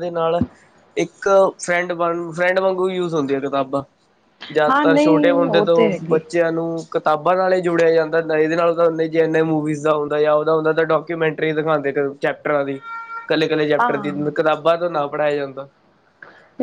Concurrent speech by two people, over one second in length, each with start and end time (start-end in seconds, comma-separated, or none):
4.7-6.2